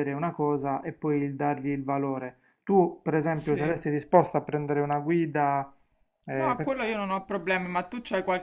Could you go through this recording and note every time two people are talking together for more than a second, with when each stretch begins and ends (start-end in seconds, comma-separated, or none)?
none